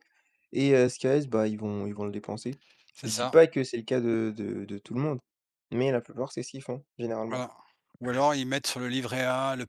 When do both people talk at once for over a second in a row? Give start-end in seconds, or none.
none